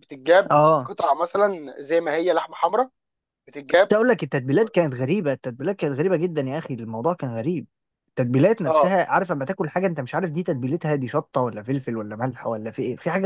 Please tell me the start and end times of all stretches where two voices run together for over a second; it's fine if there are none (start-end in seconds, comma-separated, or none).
none